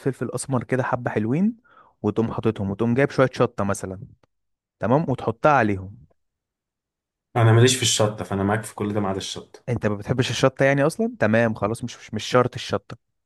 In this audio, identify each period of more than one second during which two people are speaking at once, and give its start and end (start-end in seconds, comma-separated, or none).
none